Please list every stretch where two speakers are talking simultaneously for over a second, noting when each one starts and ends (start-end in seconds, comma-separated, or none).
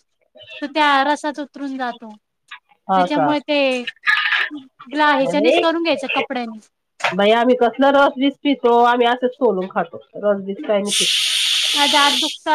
none